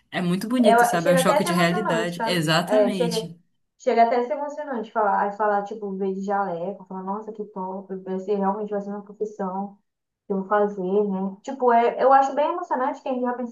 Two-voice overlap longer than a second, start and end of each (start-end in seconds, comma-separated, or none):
0.6-3.3